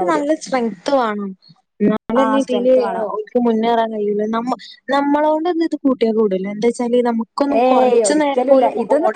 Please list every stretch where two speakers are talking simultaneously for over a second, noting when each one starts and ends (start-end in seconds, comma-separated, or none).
none